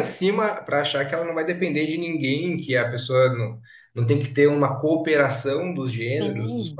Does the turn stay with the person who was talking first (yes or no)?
no